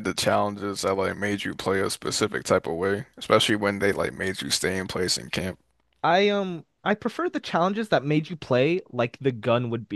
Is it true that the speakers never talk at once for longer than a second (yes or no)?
yes